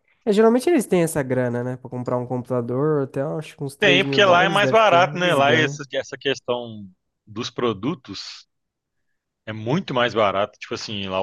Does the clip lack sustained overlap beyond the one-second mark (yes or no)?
no